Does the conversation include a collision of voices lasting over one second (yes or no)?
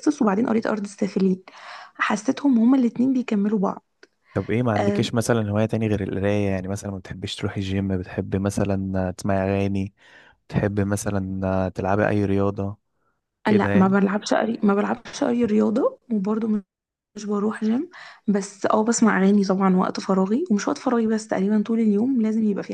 no